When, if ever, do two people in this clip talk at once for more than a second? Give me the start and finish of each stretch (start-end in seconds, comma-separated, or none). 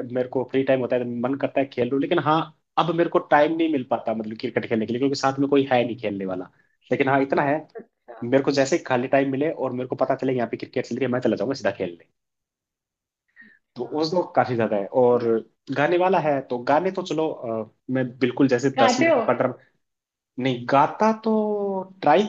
none